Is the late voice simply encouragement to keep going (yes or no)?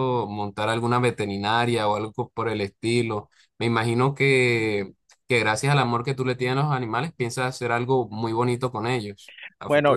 no